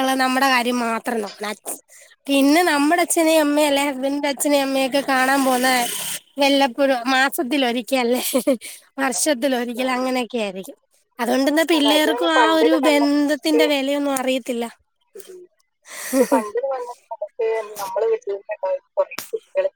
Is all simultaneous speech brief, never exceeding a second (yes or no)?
no